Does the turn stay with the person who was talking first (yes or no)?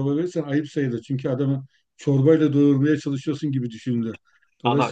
no